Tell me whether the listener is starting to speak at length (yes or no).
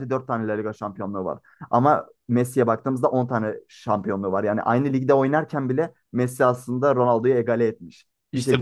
yes